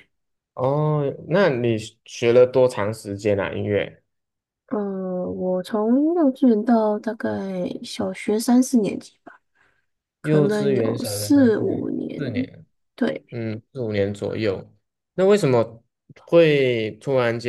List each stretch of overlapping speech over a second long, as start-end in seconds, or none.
10.2-12.2